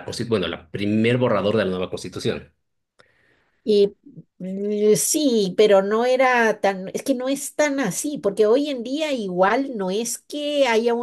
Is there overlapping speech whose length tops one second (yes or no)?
no